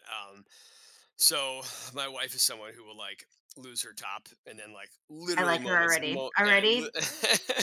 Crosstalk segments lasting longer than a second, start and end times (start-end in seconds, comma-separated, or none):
5.4-6.9